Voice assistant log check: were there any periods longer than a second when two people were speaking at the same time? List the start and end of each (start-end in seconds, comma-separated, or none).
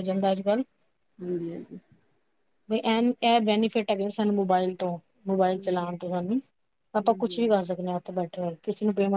none